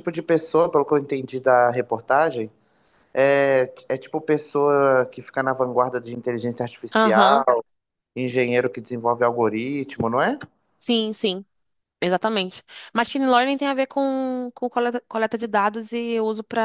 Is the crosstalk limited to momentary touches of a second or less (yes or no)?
yes